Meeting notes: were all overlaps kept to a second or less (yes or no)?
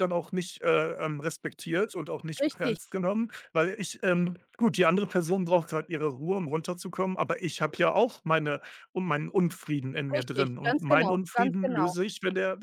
no